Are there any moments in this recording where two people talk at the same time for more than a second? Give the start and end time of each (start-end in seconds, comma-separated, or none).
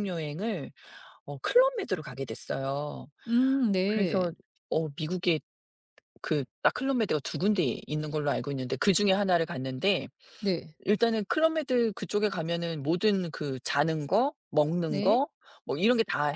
none